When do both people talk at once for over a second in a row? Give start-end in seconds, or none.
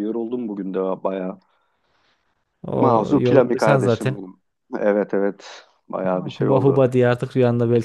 2.8-4.2